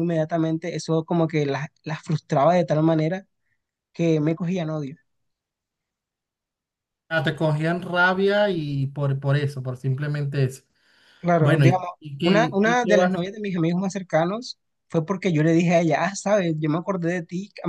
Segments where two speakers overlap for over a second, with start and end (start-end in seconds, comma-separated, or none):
11.4-13.2